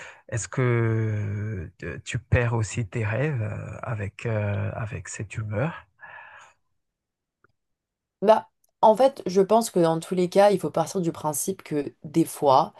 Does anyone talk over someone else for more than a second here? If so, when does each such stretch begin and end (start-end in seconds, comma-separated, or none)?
none